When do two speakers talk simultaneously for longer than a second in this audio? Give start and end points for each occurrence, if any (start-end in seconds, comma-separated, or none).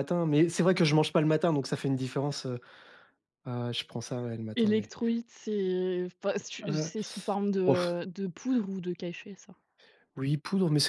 none